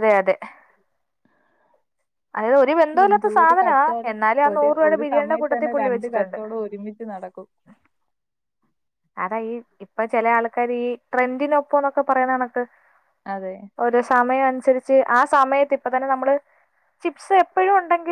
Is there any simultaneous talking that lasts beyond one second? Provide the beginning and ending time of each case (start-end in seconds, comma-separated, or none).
3.1-6.4